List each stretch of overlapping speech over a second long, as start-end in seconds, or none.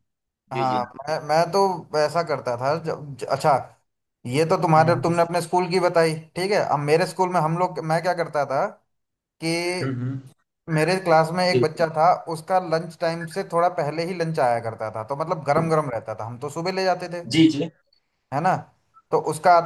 none